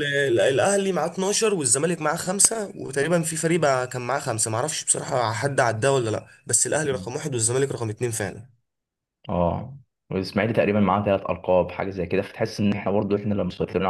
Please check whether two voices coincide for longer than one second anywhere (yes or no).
no